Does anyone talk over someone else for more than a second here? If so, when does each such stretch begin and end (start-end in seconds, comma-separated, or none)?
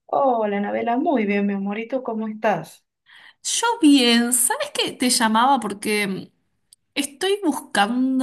none